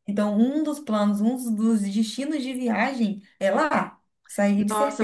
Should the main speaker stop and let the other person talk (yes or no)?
yes